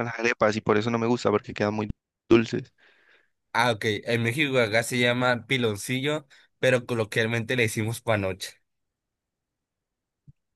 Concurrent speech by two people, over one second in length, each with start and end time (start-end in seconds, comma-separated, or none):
none